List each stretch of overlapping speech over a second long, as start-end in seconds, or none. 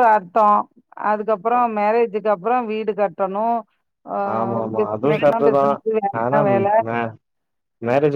none